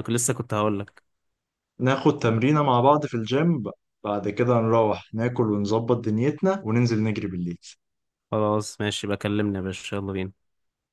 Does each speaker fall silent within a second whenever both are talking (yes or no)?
yes